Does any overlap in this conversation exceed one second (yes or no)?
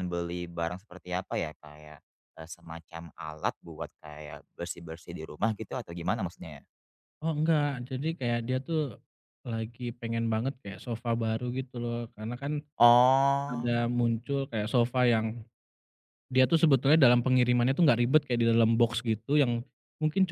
no